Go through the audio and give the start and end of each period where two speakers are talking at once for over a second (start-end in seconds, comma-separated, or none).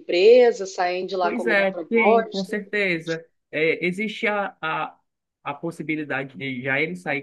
1.2-2.5